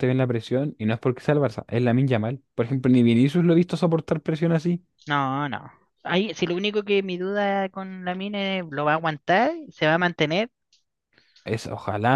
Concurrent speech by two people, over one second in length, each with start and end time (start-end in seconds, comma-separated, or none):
none